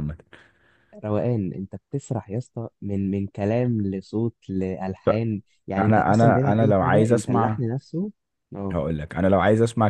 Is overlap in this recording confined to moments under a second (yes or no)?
no